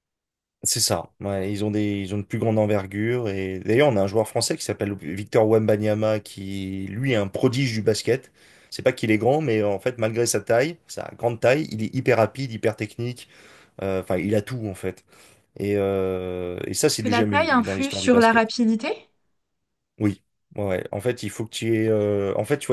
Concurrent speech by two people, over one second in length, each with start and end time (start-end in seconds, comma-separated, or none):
16.9-18.4